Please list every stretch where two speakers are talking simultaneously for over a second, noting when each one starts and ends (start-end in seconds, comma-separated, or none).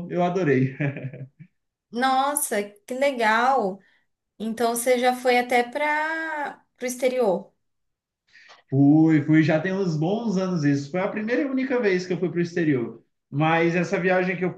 none